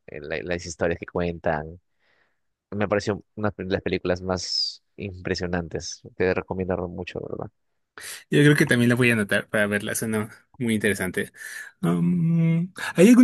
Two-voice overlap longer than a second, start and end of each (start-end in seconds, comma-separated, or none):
none